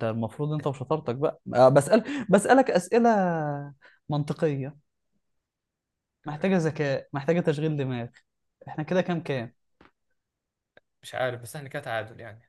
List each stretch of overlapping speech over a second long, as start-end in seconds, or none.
none